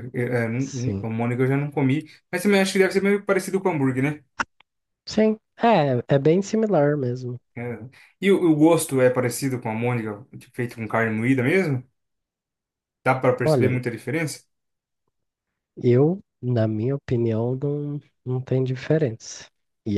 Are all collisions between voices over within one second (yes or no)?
yes